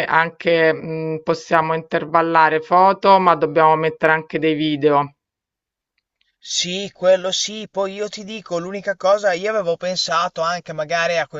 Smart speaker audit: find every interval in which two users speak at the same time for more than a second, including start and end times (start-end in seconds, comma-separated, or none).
none